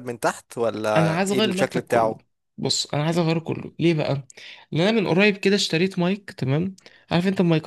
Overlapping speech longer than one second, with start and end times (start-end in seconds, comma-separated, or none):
1.0-2.2